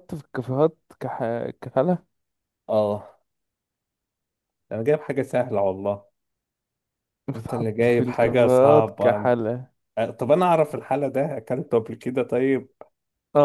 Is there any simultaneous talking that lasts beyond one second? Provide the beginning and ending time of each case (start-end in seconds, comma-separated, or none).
7.3-9.3